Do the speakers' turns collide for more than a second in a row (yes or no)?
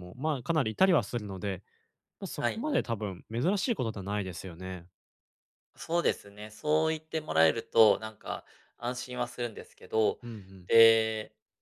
no